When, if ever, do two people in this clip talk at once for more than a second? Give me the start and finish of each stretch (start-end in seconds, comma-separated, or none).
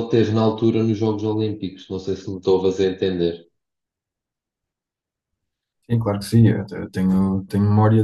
none